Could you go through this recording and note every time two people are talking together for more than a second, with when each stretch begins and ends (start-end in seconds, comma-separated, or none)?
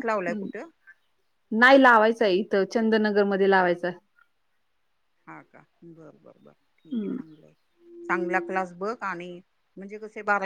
none